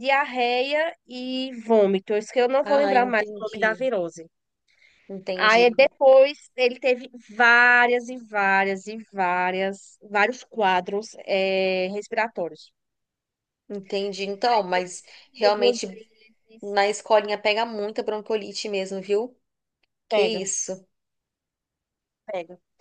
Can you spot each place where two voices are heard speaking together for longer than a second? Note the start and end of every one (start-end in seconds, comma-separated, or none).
2.6-3.9